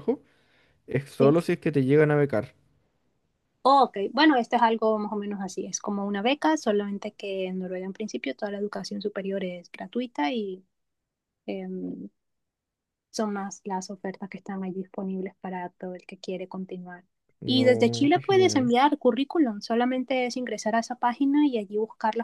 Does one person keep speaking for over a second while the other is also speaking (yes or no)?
yes